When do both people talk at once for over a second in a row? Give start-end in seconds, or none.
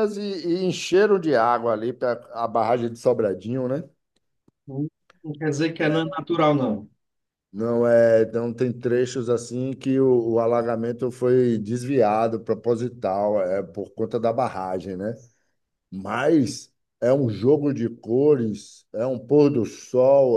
none